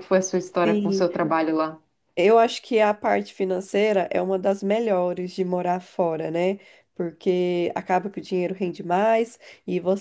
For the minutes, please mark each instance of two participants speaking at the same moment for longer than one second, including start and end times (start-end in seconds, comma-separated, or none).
none